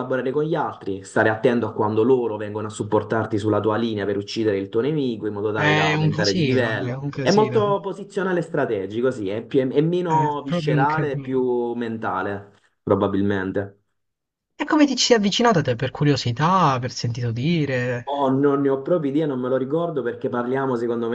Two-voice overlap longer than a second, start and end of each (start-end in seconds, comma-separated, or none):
5.5-7.8, 10.0-11.4